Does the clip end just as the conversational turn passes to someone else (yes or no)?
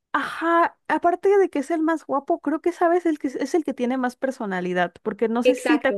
no